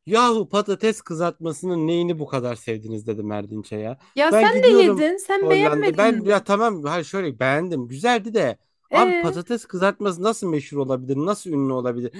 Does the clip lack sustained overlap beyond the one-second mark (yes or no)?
no